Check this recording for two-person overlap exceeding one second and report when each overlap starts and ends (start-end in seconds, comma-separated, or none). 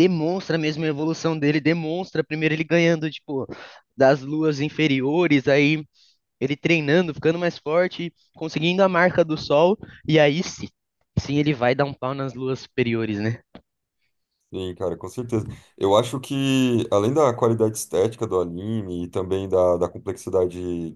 none